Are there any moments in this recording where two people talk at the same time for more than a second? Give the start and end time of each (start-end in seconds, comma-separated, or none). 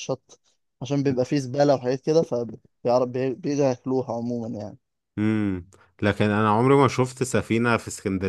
none